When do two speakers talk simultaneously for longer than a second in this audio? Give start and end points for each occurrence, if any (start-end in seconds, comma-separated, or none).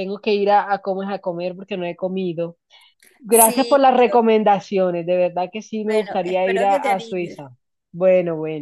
5.9-7.4